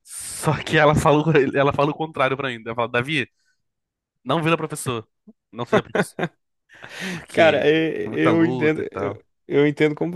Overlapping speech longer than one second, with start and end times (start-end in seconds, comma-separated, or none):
7.3-9.2